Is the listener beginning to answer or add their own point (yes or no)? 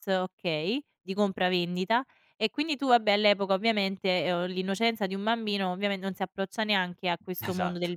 no